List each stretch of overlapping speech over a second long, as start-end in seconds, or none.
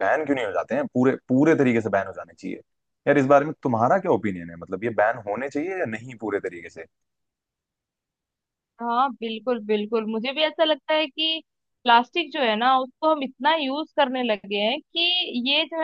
none